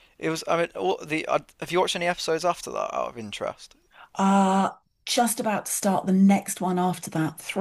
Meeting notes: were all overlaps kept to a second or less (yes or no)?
yes